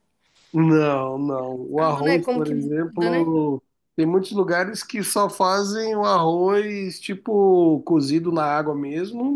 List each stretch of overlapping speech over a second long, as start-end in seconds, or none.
1.8-3.3